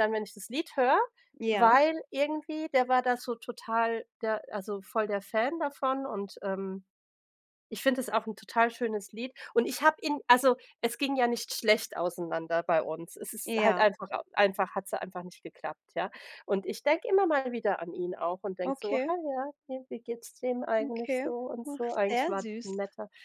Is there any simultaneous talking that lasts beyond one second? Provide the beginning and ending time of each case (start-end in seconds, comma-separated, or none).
20.8-22.8